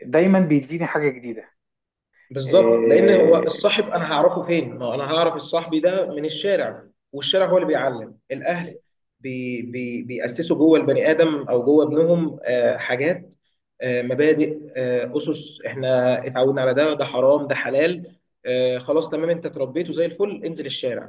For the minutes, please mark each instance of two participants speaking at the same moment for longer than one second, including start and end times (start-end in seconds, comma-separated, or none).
2.5-3.9